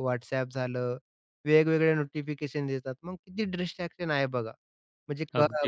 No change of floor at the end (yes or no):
no